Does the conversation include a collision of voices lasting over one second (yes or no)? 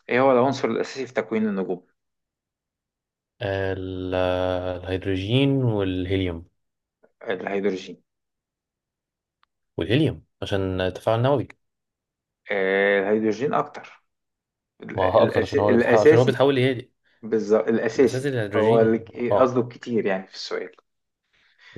yes